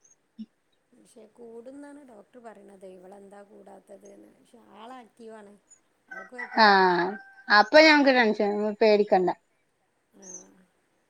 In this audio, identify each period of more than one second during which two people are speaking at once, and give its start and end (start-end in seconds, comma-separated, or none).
none